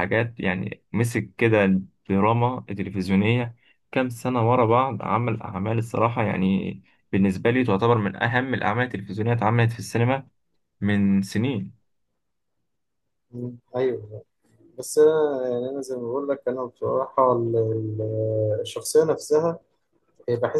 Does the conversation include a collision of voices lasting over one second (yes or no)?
no